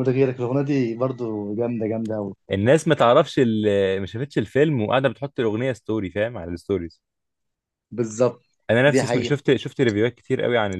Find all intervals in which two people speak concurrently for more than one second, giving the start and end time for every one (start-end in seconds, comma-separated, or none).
none